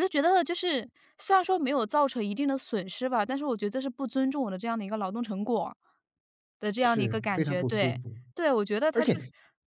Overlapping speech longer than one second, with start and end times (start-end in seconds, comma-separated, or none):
6.8-8.2